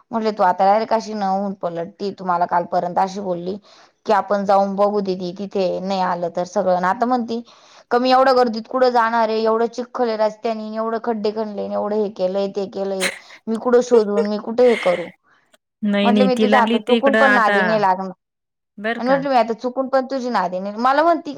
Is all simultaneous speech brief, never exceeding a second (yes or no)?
no